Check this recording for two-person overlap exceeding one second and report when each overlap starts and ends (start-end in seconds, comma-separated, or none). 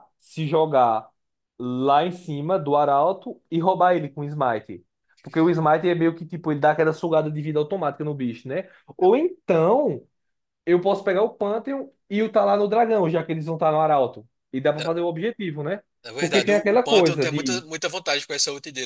16.2-17.6